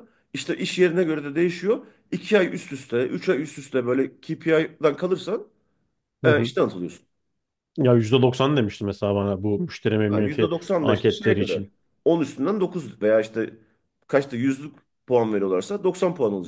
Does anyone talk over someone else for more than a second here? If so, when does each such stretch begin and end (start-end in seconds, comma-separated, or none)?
10.1-11.7